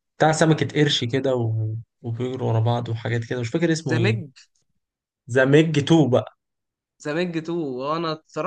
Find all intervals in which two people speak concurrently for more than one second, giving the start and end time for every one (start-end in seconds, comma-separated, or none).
none